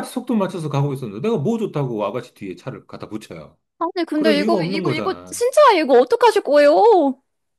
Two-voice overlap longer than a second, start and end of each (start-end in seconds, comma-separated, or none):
4.1-5.4